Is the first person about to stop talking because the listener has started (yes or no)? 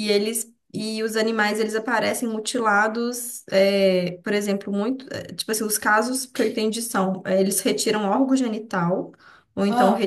no